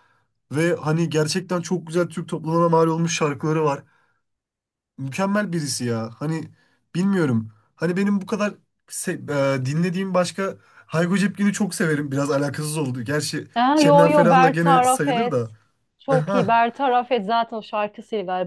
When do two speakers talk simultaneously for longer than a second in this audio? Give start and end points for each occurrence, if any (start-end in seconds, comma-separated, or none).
13.5-15.5